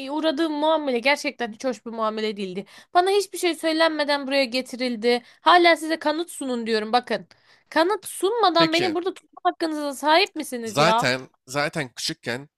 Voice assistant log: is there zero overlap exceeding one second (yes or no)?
yes